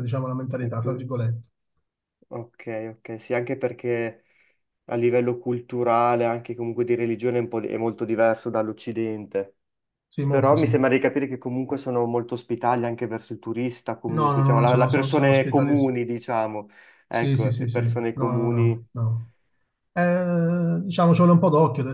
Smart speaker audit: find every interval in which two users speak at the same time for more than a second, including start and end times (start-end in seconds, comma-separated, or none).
14.1-15.7, 17.1-18.9